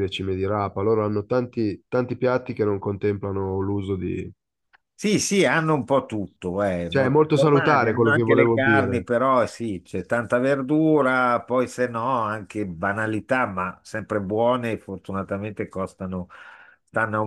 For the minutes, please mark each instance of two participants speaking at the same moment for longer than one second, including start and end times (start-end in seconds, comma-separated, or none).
6.9-9.1